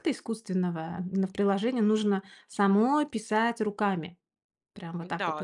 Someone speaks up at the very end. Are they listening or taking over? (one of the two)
taking over